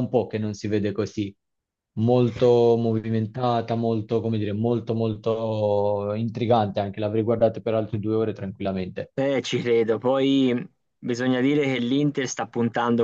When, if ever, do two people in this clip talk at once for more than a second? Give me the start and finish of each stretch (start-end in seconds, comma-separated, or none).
none